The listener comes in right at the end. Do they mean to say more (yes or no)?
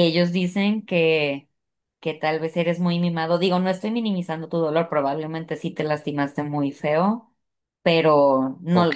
yes